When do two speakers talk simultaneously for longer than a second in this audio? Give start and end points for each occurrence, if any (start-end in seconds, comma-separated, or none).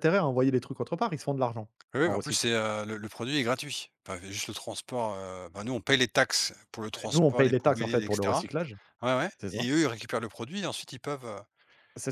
7.1-8.5